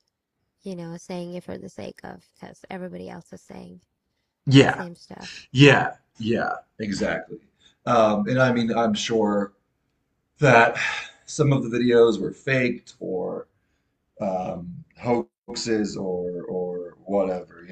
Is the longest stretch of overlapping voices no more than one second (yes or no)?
yes